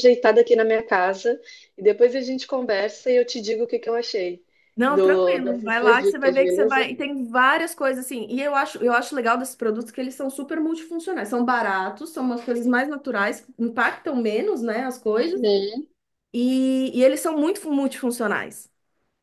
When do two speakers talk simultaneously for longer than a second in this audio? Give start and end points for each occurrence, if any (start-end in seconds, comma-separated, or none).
4.8-6.9